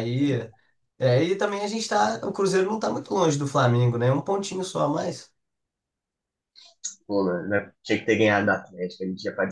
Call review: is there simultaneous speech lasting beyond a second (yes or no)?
no